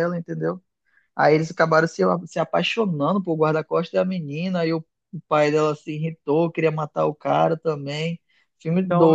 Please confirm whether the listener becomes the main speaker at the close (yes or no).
yes